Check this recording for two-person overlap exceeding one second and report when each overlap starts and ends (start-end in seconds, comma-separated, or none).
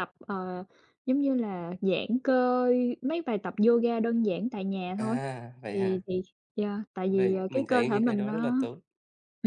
7.1-8.6